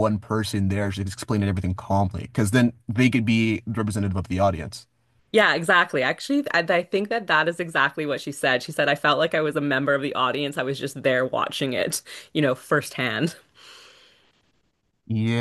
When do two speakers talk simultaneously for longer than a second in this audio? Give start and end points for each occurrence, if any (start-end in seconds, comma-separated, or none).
none